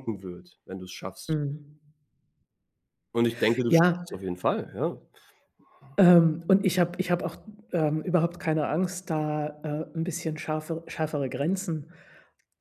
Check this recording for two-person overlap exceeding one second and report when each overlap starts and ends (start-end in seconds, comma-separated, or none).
none